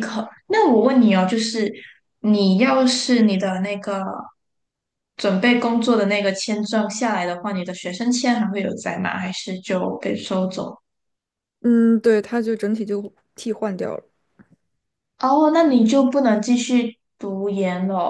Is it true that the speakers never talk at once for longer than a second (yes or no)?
yes